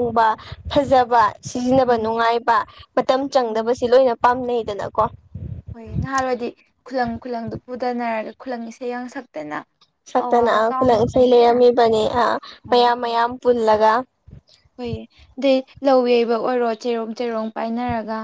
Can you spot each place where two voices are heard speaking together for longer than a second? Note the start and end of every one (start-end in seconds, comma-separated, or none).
10.2-11.5